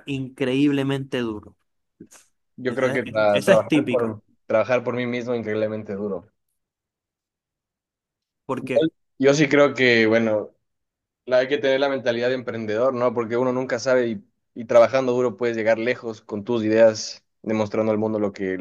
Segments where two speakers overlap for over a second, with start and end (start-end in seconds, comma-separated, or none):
2.7-4.2